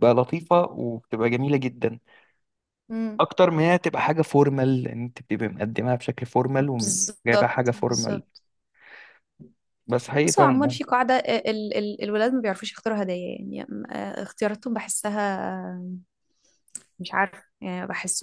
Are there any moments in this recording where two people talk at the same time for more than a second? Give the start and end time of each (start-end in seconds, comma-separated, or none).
6.8-8.2